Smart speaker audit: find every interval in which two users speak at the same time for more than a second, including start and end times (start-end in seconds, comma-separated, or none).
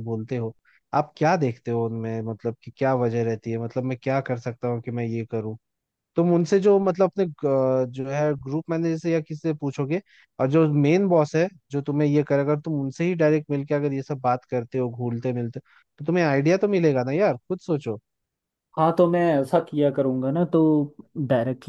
none